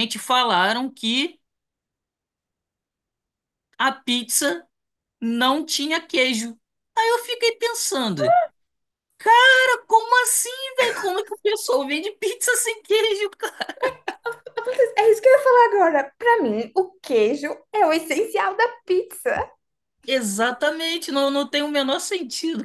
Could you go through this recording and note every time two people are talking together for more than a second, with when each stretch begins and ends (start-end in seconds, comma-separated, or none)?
none